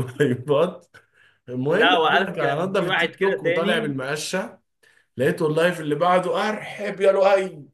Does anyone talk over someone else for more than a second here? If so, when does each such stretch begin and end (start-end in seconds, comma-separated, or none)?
1.7-3.9